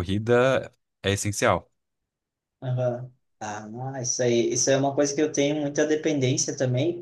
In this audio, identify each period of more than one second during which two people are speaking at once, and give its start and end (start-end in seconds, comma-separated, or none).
none